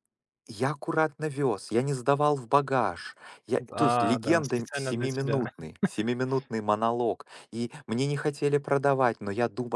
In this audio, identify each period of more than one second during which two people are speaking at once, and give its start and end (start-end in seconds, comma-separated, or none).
3.7-5.5